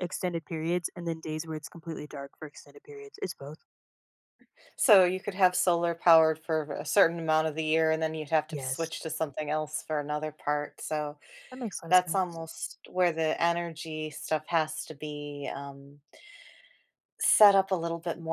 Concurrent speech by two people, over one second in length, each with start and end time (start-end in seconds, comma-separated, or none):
none